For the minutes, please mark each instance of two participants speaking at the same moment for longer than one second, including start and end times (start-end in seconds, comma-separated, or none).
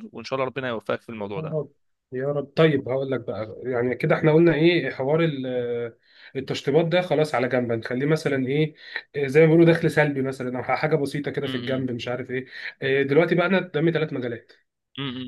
none